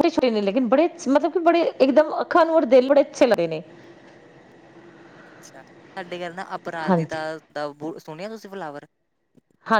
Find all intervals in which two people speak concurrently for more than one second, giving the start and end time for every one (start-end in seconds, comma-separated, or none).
none